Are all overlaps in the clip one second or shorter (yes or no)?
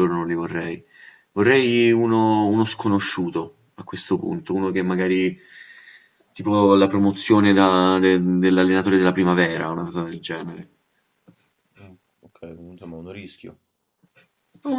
yes